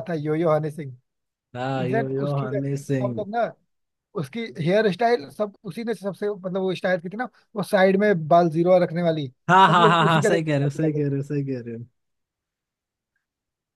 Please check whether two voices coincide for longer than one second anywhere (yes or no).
yes